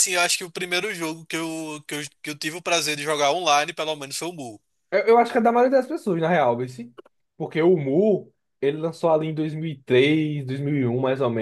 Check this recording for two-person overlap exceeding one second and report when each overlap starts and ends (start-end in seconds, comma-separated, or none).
none